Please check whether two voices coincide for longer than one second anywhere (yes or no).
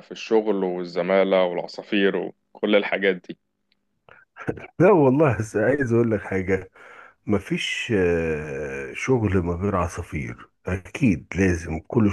no